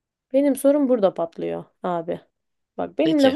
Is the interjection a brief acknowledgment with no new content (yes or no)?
yes